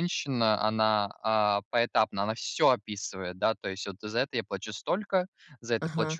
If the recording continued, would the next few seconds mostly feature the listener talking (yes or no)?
no